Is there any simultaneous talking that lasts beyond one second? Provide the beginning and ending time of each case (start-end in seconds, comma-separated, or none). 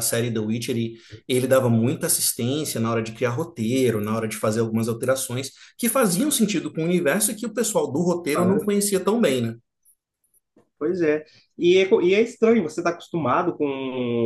none